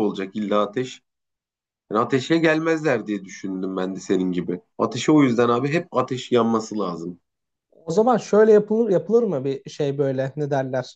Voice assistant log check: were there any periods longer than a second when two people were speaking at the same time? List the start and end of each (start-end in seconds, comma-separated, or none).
none